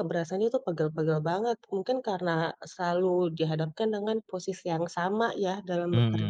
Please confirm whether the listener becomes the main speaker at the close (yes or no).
yes